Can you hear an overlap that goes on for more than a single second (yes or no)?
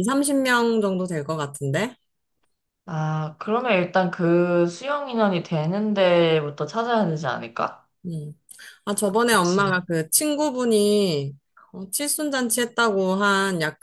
no